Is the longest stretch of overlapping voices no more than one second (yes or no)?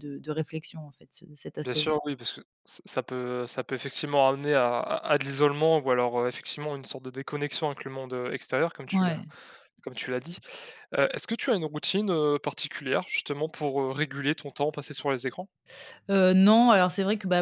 yes